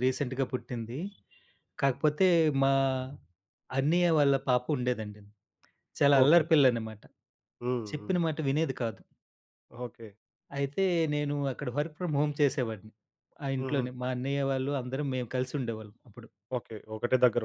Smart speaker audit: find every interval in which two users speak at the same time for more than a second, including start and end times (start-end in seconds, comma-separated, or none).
none